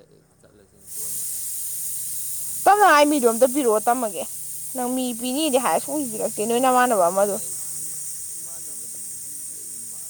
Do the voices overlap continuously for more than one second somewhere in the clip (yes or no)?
no